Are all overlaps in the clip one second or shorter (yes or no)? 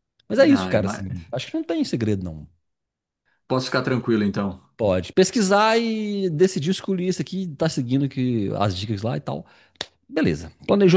yes